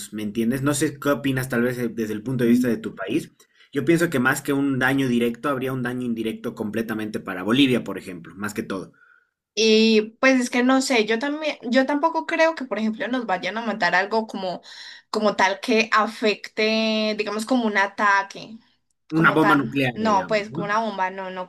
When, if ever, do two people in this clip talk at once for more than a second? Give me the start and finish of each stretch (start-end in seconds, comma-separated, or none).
19.1-20.8